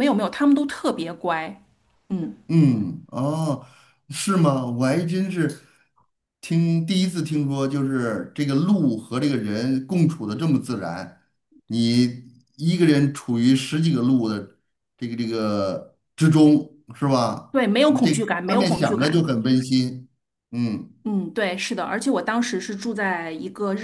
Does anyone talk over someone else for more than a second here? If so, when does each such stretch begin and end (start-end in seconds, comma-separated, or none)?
17.5-19.3